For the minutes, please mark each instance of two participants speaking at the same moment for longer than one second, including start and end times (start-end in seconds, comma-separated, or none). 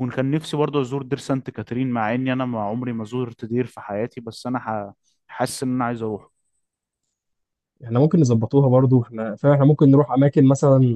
none